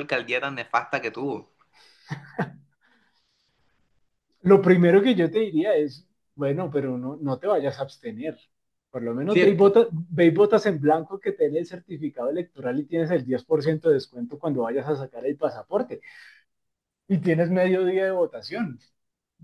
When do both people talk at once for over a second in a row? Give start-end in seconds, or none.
none